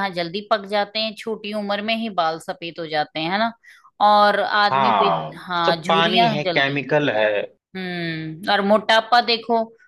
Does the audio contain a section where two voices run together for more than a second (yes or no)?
yes